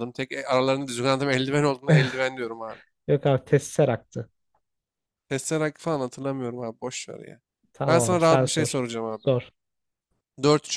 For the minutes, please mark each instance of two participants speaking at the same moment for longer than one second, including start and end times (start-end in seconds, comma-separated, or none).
7.8-9.3